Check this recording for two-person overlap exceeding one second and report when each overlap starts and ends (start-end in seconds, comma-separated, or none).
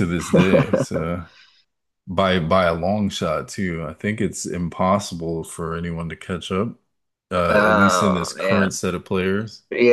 7.5-8.8